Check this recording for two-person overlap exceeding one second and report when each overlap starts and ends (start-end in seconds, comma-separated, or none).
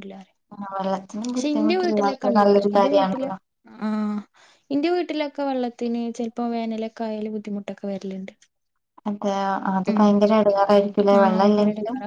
1.4-3.2